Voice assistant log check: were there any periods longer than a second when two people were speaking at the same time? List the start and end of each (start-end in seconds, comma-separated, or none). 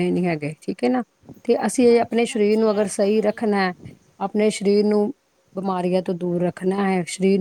1.9-3.4